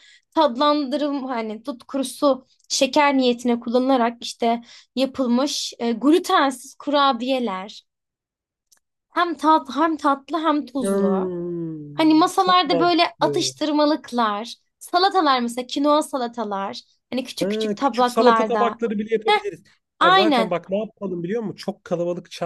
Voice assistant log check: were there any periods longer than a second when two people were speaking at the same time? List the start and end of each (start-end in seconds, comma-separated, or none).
11.9-13.5, 17.4-18.8